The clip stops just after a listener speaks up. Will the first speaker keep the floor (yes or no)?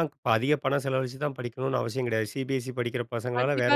no